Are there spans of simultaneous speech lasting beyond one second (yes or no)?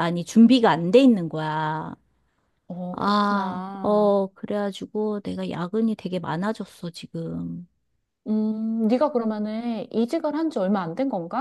yes